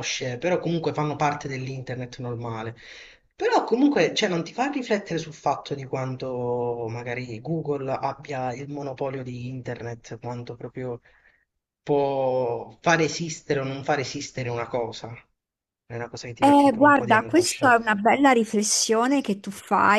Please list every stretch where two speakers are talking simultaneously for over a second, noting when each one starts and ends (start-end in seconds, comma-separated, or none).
16.4-17.8